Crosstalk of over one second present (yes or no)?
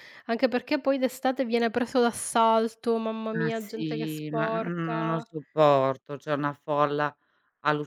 yes